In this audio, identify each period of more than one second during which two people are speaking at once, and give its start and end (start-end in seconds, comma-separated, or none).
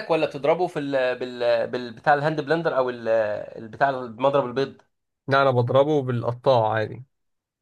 none